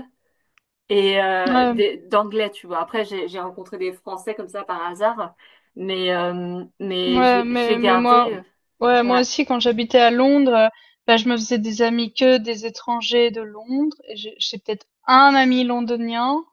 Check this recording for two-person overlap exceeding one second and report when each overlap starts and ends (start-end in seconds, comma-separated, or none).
7.0-8.3